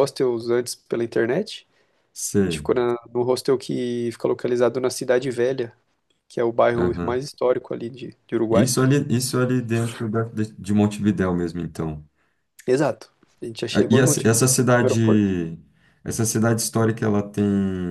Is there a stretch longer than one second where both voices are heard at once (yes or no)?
yes